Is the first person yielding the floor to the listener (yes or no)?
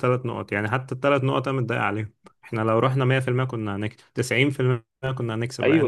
yes